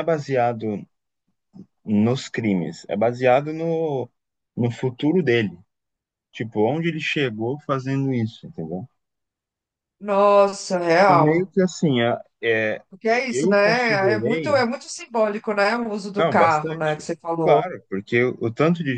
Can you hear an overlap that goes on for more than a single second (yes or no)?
yes